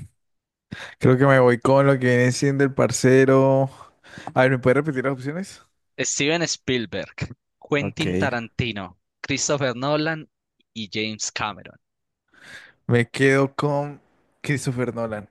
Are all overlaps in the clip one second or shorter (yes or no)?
yes